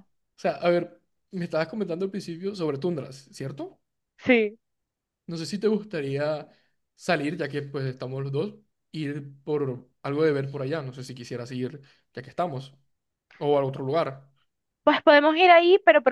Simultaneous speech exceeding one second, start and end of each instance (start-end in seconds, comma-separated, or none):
none